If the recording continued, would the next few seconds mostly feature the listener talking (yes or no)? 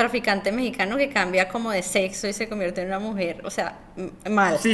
yes